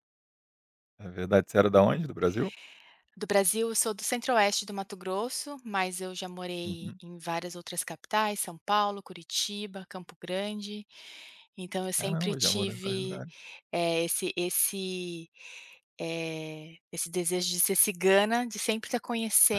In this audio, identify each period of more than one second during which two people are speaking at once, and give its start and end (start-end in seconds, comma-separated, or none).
12.0-13.2